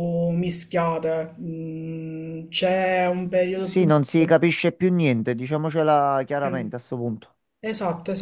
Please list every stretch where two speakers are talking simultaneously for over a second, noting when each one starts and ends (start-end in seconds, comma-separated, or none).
none